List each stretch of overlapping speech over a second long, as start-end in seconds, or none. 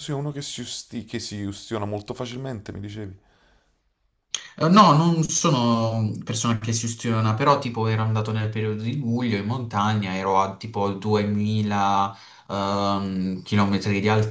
none